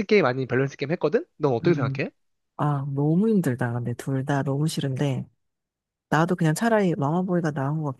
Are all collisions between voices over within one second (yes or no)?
yes